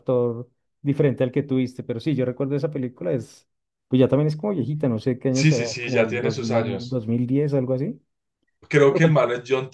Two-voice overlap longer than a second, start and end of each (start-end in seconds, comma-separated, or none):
5.3-7.0